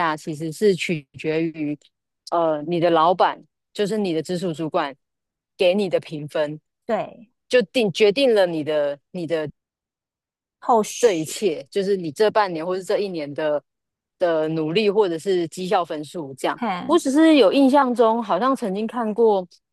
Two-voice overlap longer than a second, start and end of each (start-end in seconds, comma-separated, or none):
none